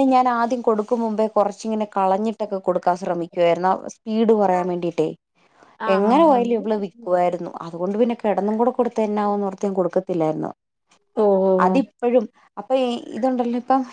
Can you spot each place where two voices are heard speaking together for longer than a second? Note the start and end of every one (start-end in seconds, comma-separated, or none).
5.9-7.4